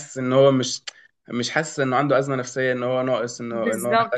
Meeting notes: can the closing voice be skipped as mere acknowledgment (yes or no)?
no